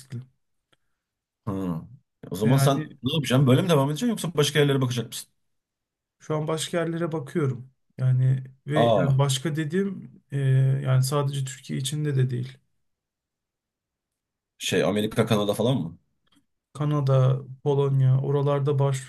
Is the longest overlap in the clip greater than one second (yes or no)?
no